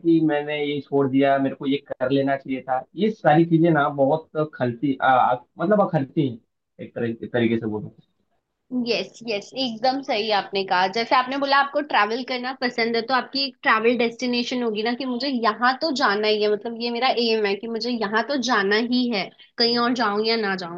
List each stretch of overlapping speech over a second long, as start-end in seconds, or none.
none